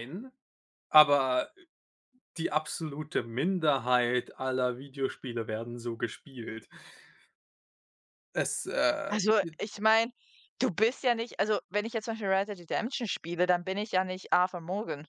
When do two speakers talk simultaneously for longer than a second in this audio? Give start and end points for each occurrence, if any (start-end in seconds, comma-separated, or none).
none